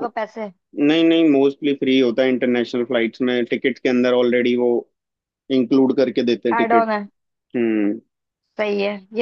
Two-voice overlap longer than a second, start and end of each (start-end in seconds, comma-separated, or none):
none